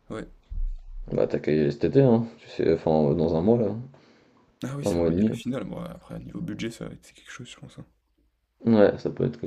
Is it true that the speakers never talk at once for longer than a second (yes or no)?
yes